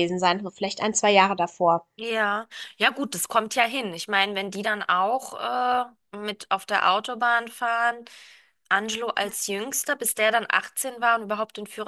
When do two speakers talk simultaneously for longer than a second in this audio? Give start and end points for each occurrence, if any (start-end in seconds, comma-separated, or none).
none